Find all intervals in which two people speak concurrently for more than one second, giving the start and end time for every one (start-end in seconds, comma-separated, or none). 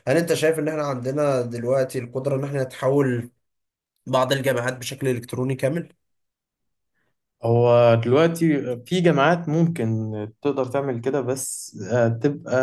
none